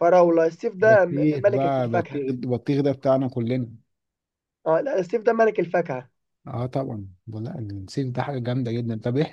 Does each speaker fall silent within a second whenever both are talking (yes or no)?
no